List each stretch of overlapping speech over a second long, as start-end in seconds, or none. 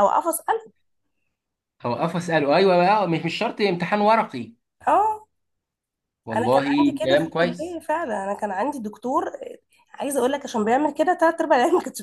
6.3-7.8